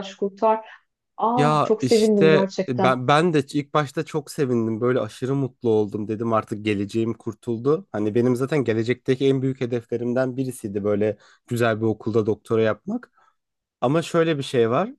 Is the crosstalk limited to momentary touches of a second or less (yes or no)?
no